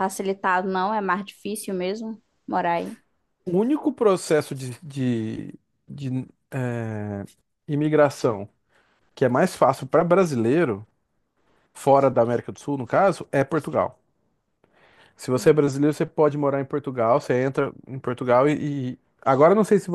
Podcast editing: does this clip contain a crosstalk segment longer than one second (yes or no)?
no